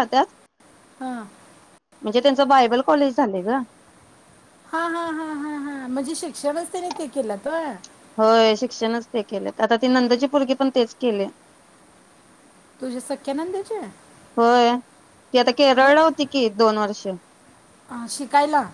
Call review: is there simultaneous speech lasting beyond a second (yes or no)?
no